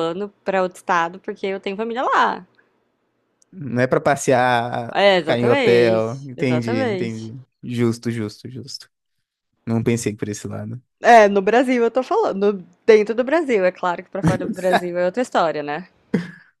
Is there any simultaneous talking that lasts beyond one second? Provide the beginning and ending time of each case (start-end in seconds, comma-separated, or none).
4.9-7.3